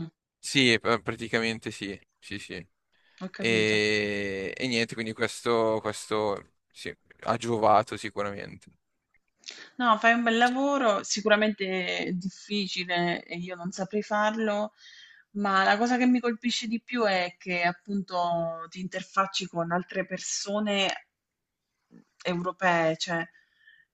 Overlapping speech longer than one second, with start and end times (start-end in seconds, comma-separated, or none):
none